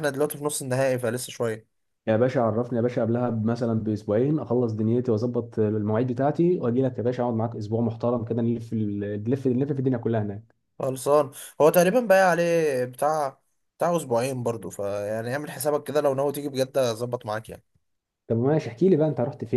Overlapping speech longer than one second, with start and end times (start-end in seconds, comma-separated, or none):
none